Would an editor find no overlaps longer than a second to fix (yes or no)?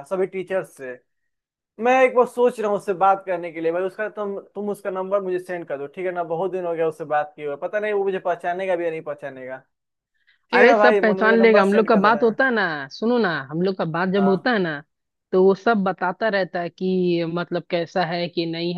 no